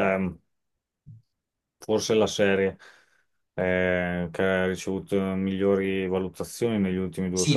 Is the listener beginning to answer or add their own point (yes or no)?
yes